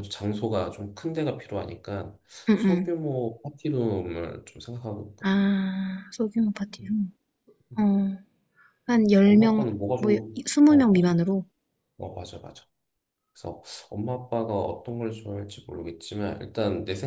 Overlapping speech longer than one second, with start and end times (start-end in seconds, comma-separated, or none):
9.2-11.2